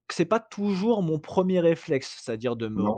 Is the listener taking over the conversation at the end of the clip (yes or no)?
no